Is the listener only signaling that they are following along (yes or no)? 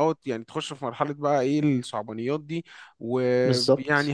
yes